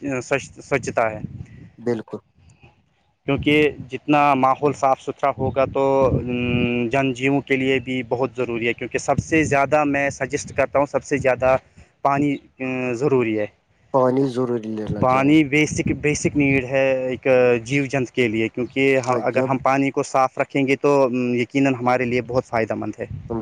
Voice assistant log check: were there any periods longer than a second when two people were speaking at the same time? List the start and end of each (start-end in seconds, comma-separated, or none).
none